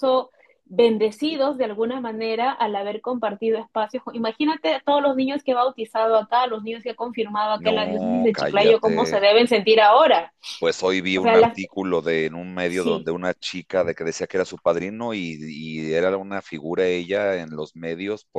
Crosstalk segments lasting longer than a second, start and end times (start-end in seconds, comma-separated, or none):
7.6-9.2